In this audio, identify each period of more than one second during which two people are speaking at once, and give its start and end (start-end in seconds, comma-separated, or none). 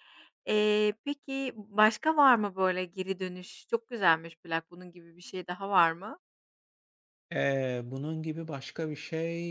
none